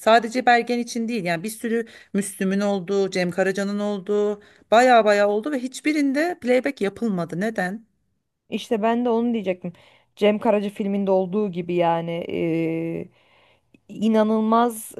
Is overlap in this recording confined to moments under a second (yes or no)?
yes